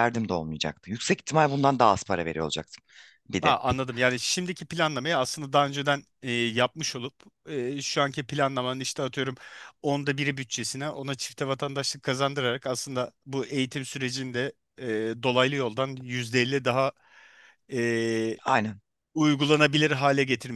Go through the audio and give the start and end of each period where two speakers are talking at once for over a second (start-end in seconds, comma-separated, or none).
none